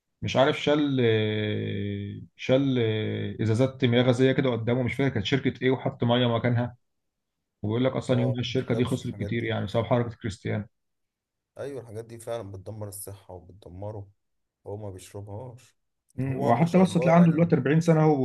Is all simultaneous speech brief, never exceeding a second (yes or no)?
no